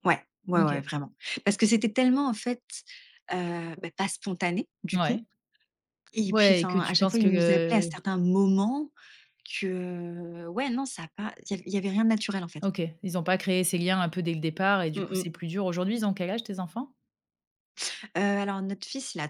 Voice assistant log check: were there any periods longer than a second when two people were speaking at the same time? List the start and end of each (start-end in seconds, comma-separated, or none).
6.3-7.9